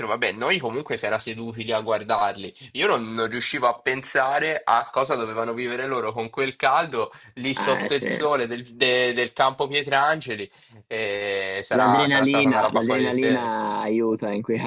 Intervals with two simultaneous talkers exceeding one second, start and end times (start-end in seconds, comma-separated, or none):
11.8-13.4